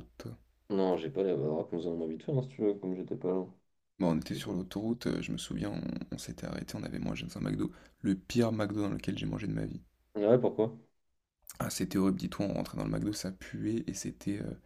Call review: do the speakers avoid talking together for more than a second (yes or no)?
yes